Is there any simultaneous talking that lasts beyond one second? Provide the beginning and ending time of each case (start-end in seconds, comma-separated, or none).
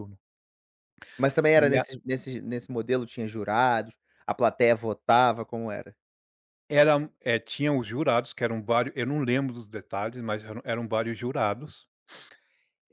none